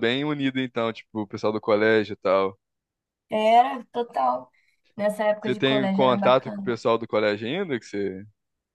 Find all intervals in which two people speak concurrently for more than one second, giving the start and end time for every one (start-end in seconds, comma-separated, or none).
5.4-6.8